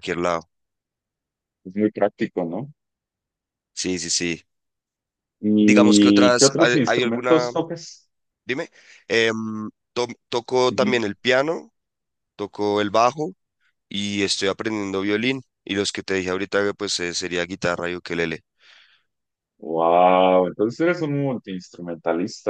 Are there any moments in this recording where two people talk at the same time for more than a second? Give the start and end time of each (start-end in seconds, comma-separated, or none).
5.6-7.5